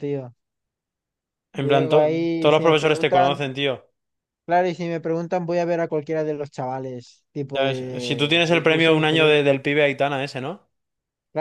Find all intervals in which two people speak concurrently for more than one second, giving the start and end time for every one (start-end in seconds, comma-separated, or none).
1.5-3.4, 7.5-9.3